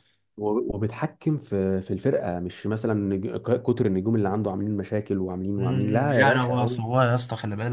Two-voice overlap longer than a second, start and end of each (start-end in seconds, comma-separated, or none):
5.6-6.8